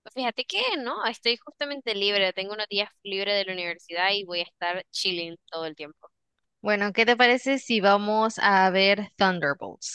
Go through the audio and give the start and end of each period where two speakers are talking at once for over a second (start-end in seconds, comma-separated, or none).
none